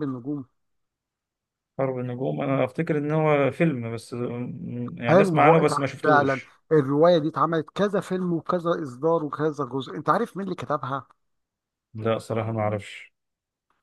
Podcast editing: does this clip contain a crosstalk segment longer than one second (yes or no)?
yes